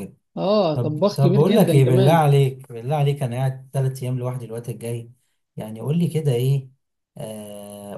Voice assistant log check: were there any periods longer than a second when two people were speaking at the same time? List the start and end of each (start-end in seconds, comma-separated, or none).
0.7-2.3